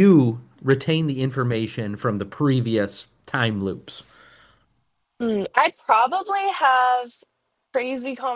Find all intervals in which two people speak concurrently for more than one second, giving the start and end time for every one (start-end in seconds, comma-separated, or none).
none